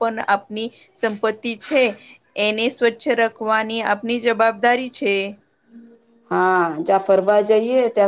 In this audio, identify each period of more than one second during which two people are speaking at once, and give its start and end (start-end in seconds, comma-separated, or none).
none